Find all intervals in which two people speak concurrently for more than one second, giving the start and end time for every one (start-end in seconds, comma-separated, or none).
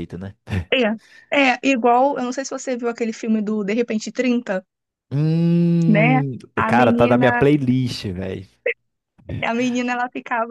5.9-7.5